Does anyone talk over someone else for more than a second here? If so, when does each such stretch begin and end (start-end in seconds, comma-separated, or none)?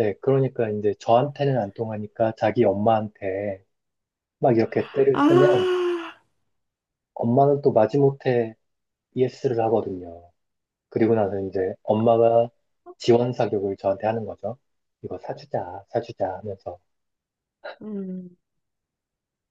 none